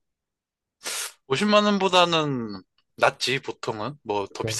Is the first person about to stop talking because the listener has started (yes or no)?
no